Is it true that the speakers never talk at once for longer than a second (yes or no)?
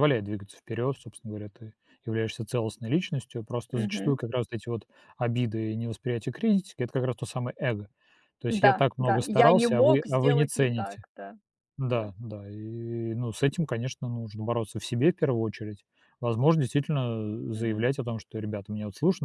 no